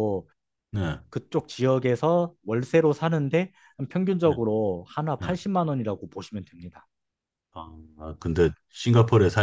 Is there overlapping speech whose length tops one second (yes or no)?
no